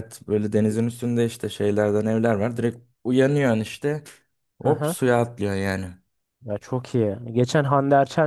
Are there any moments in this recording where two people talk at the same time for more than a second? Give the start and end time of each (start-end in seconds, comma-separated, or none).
none